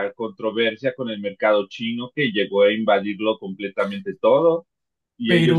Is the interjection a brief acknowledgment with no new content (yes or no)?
yes